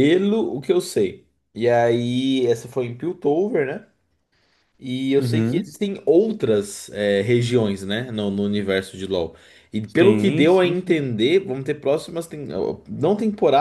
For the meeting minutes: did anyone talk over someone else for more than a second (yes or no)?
yes